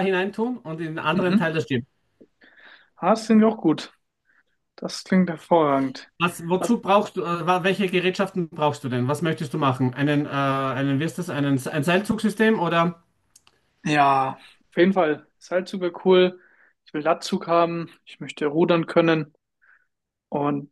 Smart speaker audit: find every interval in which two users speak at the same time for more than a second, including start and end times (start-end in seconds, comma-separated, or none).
none